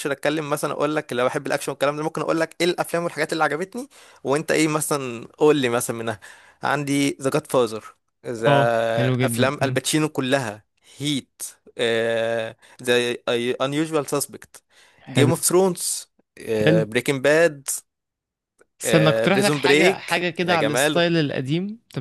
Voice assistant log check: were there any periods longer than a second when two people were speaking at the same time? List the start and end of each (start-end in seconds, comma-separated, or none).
19.3-21.1